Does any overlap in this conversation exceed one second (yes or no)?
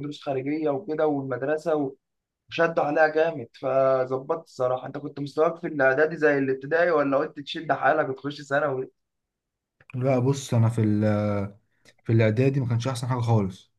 no